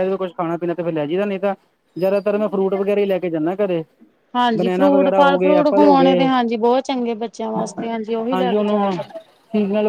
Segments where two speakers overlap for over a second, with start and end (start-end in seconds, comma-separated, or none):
4.6-6.2